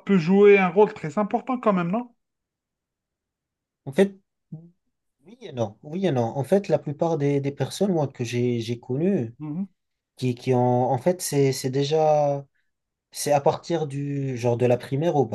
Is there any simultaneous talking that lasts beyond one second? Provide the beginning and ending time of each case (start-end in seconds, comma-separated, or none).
none